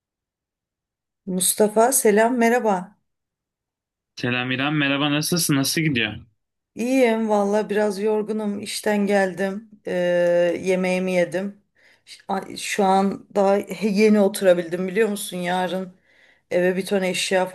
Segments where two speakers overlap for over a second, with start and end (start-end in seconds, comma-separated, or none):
none